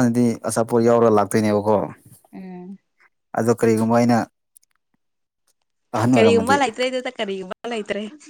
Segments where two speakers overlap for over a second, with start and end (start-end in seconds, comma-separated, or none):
none